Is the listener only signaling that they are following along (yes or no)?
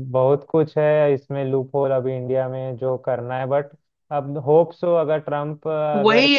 no